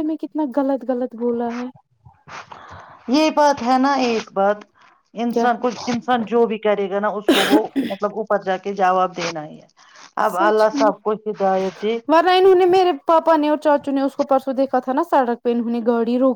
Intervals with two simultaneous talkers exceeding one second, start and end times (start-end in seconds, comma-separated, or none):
10.3-12.0